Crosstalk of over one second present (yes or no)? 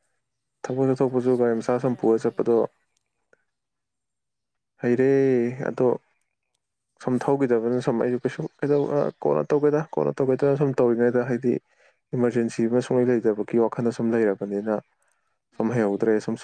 yes